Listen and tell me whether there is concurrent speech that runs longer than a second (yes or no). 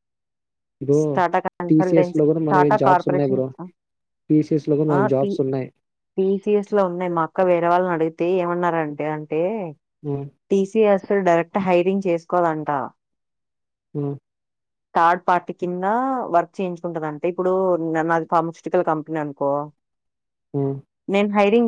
yes